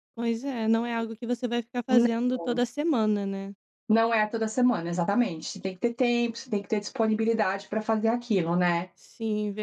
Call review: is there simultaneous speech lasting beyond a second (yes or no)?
no